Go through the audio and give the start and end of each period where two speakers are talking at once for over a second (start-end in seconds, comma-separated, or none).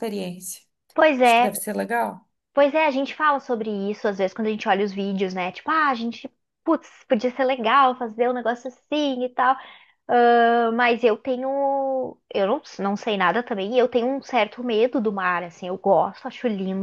none